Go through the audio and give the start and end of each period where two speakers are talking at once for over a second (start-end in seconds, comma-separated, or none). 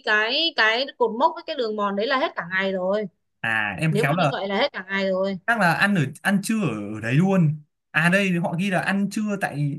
none